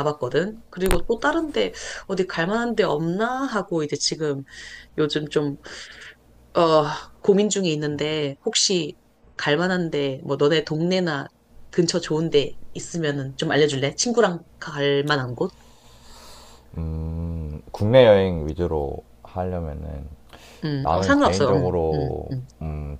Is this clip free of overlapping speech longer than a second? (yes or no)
no